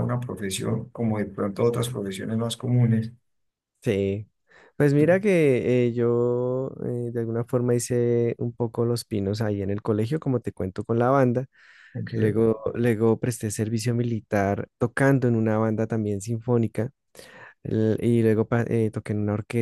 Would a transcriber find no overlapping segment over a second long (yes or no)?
yes